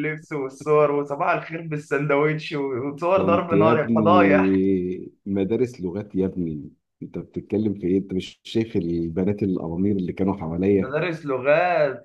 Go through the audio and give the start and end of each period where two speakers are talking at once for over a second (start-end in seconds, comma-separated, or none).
3.1-4.5